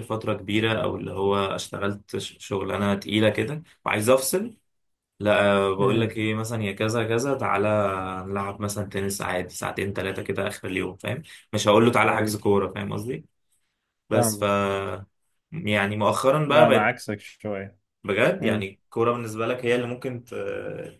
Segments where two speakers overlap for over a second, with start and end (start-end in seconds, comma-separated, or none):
none